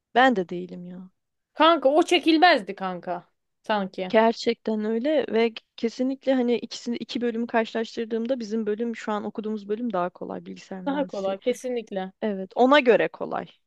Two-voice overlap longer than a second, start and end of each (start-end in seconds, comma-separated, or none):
none